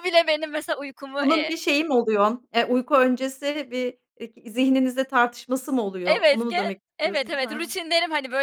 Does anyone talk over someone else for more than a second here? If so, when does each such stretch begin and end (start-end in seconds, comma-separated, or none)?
6.0-7.7